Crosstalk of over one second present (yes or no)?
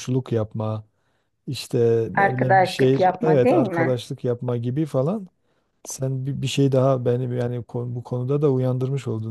yes